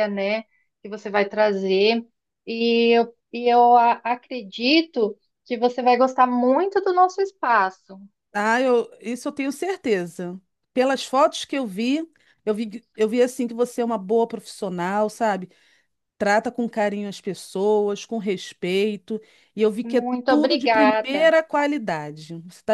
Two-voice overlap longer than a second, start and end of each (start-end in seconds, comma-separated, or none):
19.8-21.3